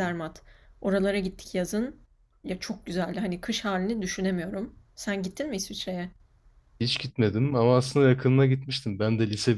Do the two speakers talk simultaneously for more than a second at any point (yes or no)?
no